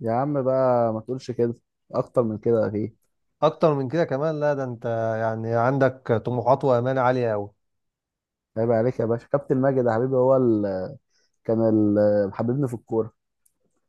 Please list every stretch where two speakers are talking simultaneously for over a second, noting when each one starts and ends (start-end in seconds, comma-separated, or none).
none